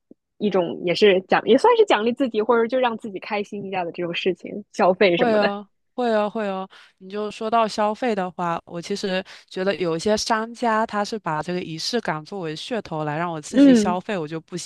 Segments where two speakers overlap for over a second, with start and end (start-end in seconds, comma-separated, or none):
none